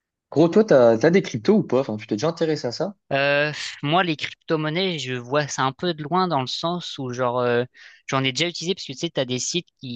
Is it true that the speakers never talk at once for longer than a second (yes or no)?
yes